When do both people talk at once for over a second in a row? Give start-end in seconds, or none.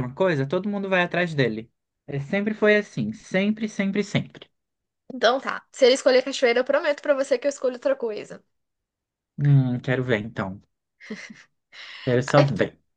none